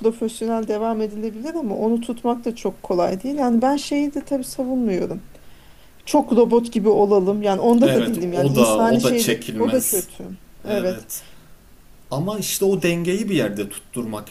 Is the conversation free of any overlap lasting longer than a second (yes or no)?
no